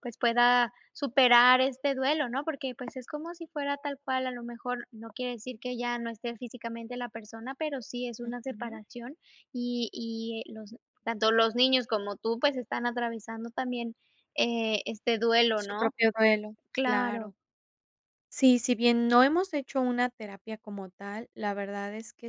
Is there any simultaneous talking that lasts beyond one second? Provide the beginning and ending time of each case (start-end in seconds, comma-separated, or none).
none